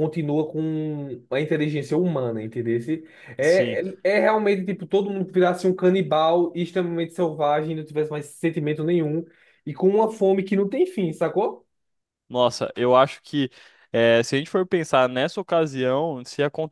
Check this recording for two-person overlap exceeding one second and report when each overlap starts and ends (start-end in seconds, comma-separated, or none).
none